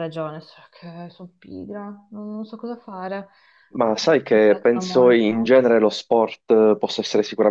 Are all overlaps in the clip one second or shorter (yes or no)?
no